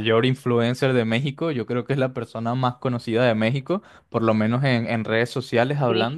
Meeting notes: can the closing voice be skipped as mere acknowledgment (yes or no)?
yes